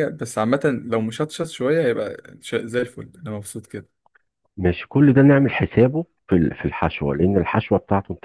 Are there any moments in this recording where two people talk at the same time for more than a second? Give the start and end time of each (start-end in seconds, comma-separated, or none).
none